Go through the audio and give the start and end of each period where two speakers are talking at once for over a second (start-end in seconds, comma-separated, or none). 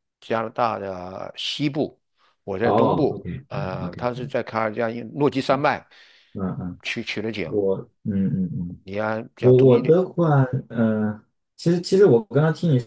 2.6-4.1